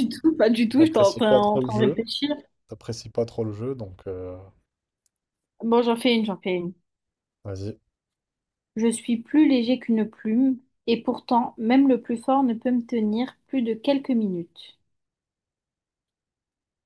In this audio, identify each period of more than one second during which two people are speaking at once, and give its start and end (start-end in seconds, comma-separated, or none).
0.8-2.1